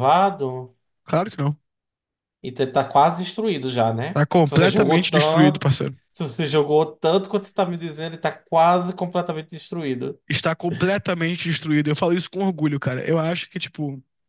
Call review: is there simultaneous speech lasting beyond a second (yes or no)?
yes